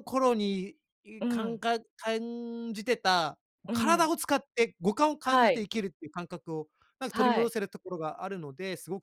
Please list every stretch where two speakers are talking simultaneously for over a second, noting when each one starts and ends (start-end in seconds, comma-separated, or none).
none